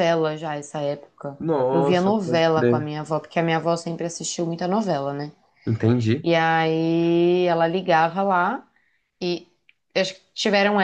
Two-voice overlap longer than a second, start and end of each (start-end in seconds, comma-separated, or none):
1.4-2.9